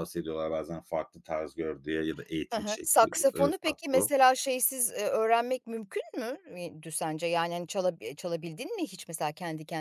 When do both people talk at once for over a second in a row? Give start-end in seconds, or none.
2.5-4.1